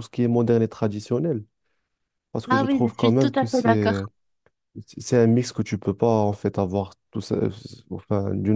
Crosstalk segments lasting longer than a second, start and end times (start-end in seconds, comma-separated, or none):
2.5-4.0